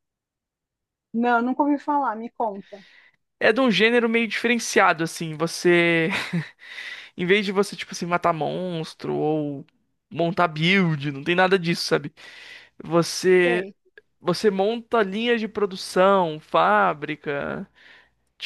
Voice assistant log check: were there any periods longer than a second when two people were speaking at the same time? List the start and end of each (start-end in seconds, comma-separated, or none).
none